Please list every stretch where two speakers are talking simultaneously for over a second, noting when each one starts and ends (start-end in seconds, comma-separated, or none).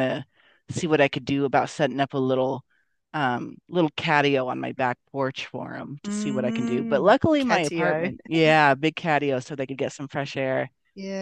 6.0-8.1